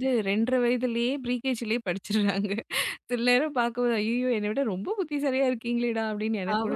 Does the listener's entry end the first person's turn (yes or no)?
yes